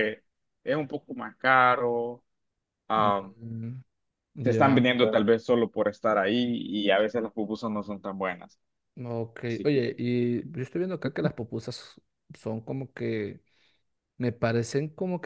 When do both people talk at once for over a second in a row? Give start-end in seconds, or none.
none